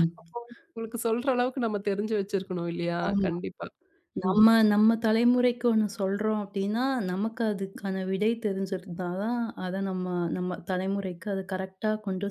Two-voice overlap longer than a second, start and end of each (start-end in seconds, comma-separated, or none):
none